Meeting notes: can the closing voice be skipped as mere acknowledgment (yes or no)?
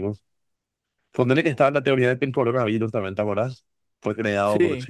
yes